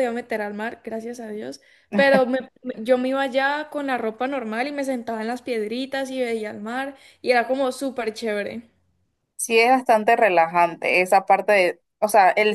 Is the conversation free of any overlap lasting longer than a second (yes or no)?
yes